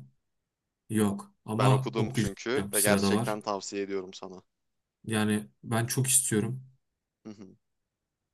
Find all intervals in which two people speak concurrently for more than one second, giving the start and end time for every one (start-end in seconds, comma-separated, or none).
1.5-3.4